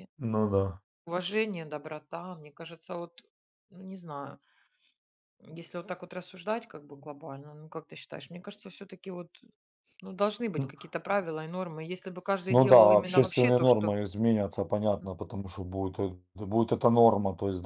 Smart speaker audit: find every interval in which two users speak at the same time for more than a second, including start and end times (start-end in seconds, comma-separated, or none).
12.5-13.9